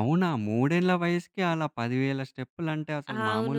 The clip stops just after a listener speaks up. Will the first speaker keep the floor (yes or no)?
no